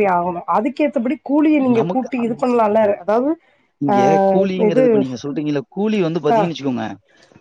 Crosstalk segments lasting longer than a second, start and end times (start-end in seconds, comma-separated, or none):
none